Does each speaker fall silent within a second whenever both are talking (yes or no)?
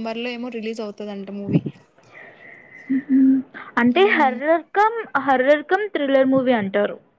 yes